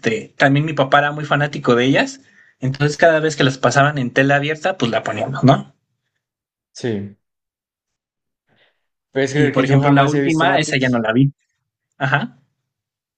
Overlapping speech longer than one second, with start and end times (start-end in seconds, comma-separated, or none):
9.3-11.0